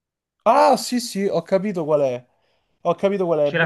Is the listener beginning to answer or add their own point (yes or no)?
no